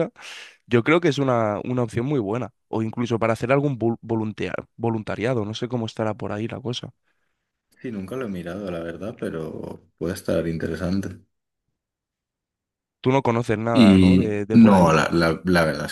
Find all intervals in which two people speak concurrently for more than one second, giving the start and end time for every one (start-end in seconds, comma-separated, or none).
13.7-15.0